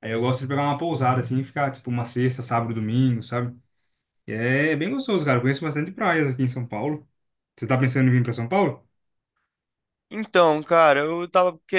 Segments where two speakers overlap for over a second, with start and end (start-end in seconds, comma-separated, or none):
none